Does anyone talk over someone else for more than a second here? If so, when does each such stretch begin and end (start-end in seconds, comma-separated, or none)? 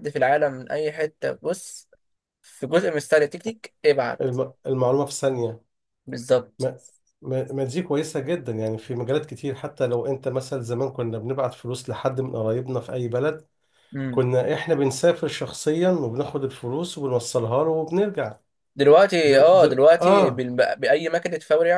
19.2-20.5